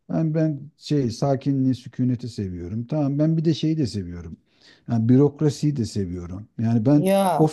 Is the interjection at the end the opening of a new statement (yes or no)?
no